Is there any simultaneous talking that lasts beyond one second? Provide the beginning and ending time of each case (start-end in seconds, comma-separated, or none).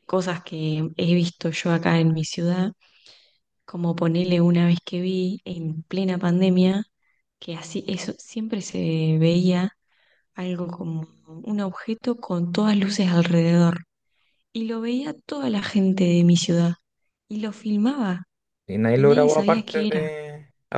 18.9-20.2